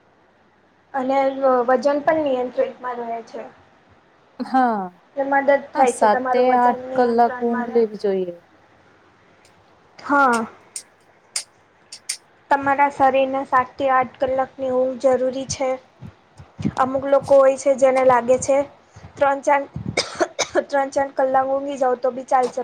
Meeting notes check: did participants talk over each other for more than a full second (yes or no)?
yes